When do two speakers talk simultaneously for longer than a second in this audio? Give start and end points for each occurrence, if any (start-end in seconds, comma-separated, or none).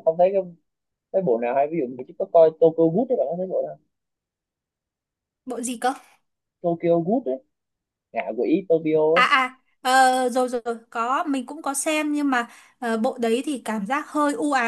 none